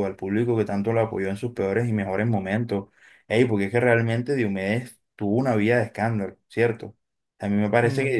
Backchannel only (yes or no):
yes